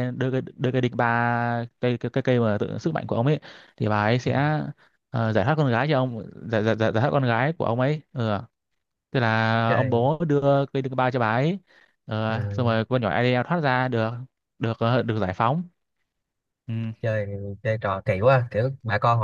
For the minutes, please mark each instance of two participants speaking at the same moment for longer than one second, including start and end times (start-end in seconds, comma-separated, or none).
none